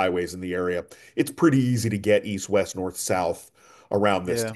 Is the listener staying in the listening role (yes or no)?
yes